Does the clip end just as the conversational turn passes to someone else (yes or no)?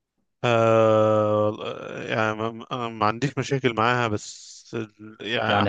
yes